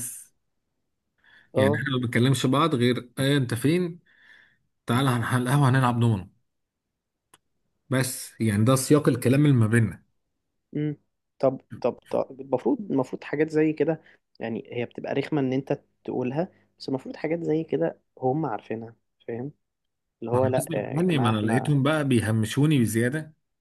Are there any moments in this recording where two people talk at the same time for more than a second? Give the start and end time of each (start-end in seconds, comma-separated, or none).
20.3-21.8